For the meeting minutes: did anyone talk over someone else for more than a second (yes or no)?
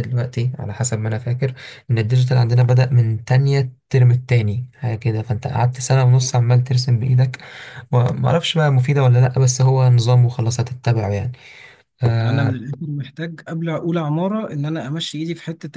no